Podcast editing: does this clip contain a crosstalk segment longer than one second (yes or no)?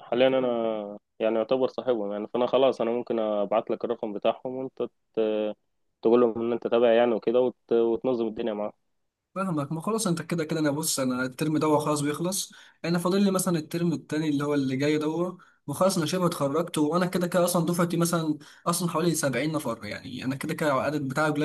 no